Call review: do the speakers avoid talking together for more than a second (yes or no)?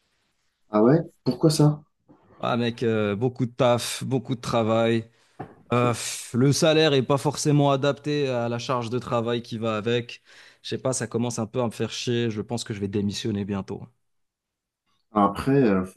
yes